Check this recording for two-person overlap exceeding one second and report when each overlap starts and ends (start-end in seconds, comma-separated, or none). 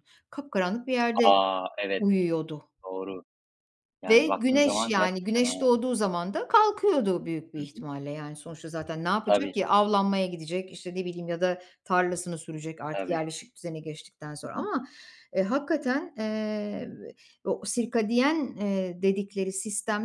4.1-5.7